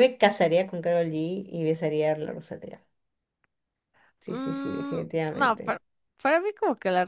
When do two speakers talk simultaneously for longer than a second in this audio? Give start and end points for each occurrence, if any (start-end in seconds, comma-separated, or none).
4.3-5.8